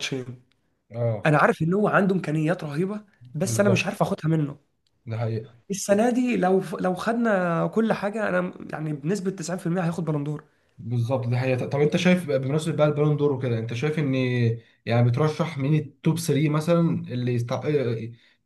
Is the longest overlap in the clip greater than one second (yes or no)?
no